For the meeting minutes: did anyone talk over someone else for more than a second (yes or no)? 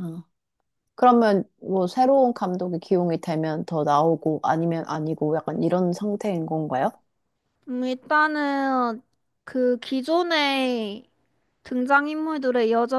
no